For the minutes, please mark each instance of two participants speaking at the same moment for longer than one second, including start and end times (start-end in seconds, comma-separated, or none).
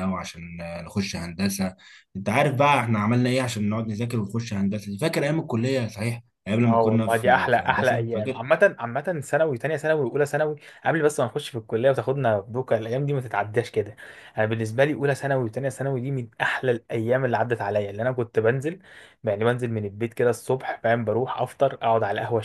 6.6-8.4